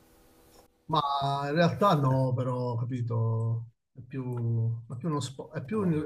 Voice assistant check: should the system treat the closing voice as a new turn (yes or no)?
no